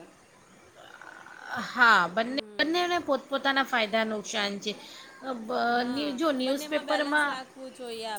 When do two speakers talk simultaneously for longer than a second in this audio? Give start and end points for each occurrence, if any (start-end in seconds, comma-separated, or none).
5.8-7.4